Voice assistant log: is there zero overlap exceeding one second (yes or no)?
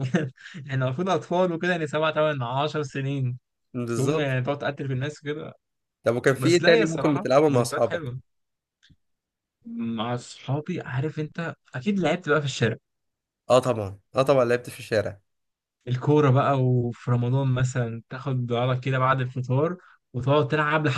no